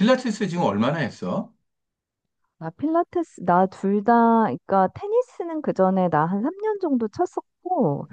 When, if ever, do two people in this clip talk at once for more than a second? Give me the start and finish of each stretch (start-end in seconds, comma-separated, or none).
none